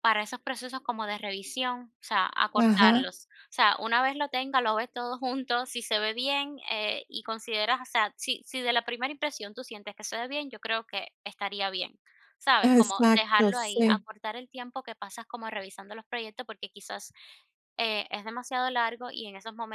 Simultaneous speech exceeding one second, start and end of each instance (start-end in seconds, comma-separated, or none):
12.6-14.1